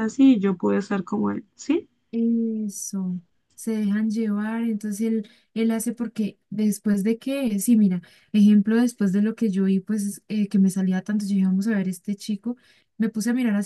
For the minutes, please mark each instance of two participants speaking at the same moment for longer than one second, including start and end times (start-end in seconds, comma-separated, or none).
none